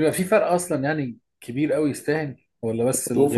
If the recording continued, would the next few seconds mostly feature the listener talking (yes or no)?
yes